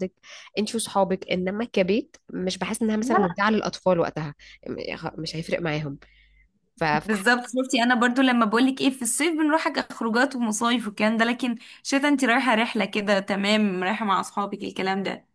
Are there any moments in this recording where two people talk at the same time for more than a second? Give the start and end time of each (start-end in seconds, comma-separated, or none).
none